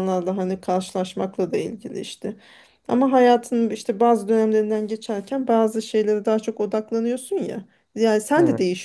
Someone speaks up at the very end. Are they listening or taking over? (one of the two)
listening